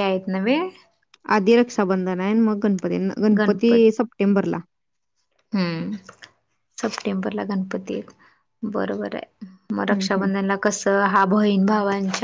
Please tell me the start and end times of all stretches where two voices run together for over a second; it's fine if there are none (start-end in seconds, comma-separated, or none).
none